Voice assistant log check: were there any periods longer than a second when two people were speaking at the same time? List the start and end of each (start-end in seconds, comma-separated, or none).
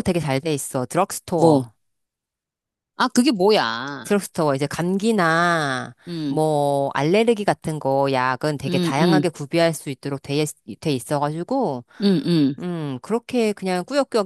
none